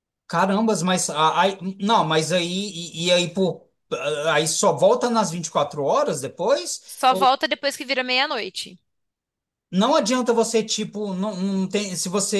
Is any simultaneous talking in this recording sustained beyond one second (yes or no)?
no